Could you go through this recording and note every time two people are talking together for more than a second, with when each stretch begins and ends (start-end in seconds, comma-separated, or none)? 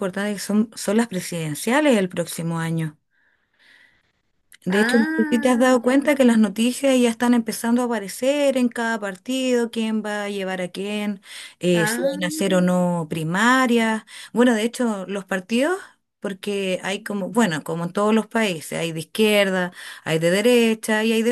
4.7-6.1